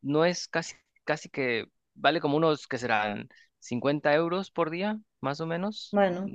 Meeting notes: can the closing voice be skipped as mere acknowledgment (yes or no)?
yes